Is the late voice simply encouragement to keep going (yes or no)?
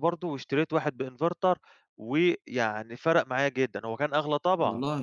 no